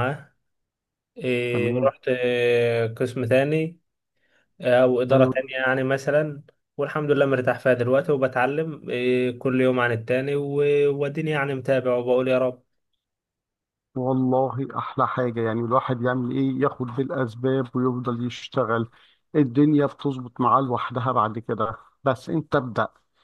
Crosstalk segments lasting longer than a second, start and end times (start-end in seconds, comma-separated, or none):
none